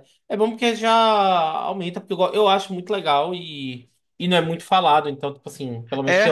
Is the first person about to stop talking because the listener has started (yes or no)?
yes